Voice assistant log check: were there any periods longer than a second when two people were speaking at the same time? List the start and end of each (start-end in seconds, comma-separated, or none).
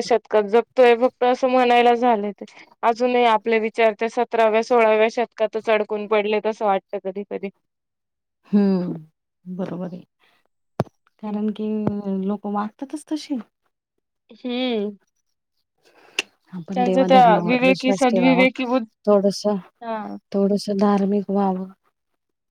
16.8-18.4